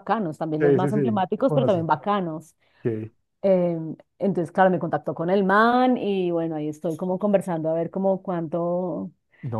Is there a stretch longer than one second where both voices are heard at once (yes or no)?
yes